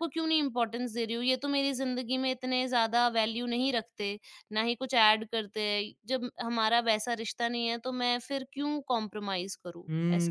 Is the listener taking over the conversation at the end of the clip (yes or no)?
yes